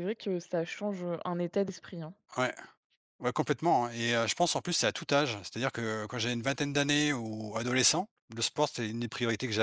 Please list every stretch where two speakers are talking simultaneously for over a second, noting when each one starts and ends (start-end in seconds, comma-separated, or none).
none